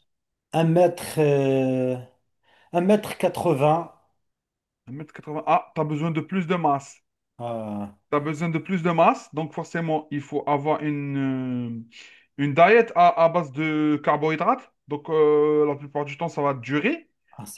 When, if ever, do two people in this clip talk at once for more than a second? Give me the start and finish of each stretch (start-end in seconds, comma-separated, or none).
none